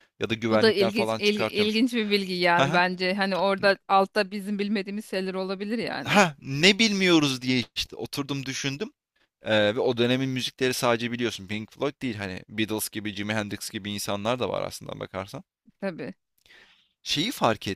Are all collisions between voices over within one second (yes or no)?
no